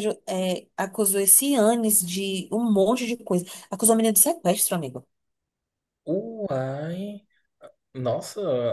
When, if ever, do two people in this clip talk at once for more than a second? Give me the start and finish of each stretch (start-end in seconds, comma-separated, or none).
none